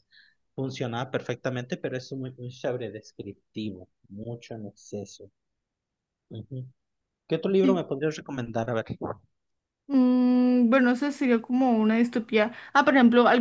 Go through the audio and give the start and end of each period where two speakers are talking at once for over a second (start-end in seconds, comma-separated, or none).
none